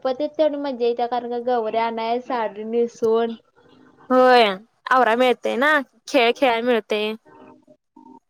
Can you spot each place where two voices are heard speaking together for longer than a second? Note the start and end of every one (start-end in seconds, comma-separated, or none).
none